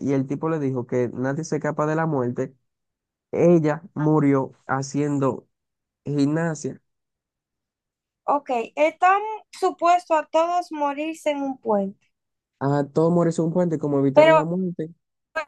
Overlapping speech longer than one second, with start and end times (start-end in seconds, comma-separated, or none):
none